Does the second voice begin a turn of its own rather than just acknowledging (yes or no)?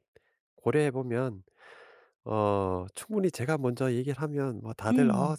no